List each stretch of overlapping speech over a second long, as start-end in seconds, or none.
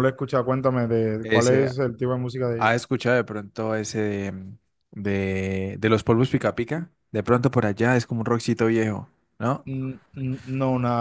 none